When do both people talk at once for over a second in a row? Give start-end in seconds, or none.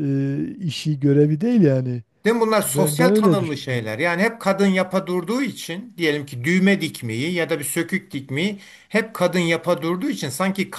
2.6-3.9